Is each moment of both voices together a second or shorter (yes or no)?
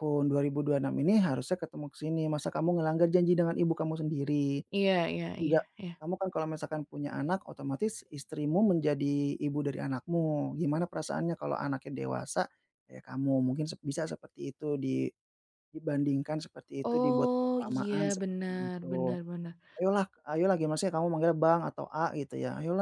no